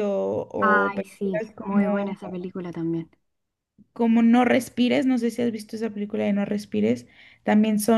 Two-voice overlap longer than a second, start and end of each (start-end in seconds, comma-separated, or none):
0.6-2.1